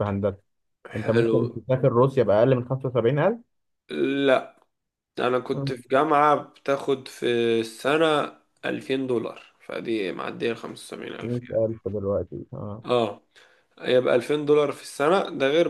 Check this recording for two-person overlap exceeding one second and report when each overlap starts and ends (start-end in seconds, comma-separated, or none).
none